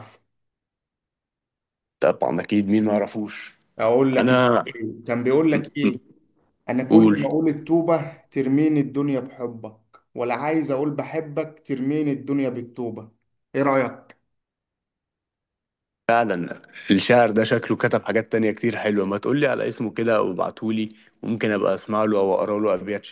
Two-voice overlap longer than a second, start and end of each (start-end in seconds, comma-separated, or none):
none